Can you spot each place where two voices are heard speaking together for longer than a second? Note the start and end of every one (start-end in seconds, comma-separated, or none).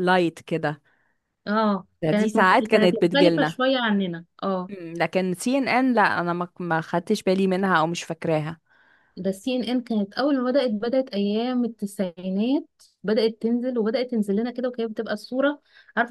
2.2-3.6